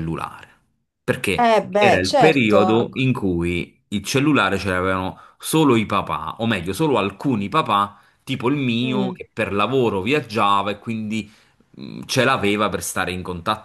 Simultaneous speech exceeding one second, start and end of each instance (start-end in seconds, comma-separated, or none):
1.4-3.0